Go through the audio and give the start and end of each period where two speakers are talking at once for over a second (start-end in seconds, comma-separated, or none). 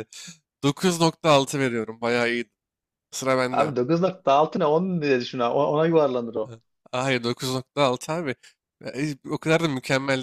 none